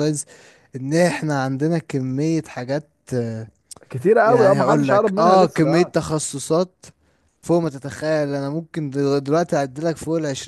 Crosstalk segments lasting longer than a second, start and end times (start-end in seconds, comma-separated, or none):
4.2-5.9